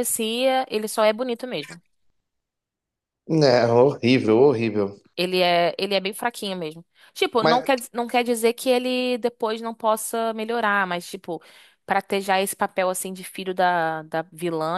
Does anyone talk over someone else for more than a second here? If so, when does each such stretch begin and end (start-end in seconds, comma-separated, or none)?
none